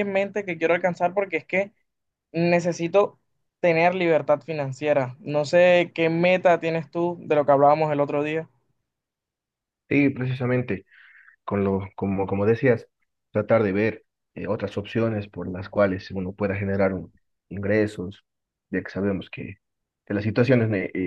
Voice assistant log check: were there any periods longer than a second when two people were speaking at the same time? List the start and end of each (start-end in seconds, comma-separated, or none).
none